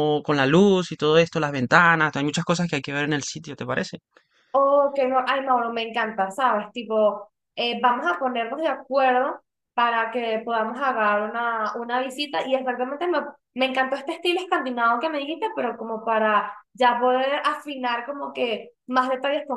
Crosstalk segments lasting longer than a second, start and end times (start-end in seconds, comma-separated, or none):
none